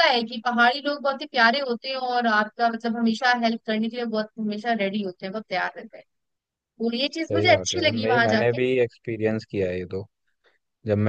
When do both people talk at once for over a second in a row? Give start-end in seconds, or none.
7.3-8.6